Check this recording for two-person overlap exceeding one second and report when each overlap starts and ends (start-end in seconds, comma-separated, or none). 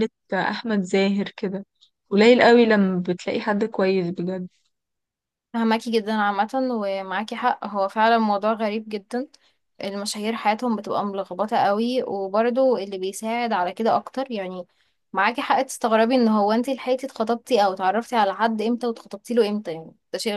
none